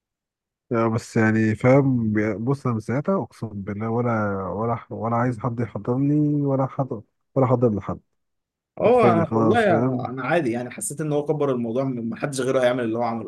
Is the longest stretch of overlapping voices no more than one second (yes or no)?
no